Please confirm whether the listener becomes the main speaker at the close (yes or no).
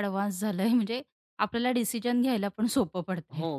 yes